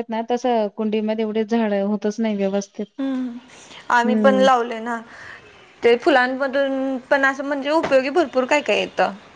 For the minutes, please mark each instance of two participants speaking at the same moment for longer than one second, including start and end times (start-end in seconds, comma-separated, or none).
none